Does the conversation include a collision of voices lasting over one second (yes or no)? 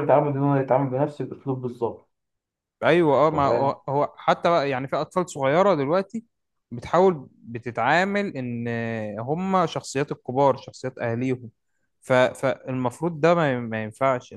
no